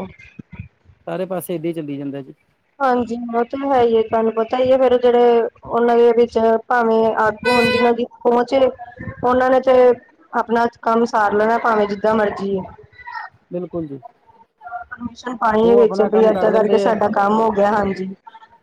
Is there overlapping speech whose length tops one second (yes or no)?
yes